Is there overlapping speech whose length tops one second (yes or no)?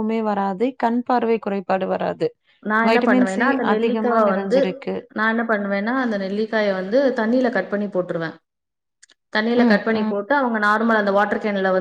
yes